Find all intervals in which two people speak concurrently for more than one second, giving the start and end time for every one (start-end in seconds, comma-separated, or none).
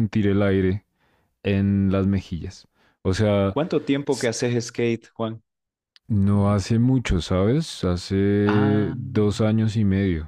none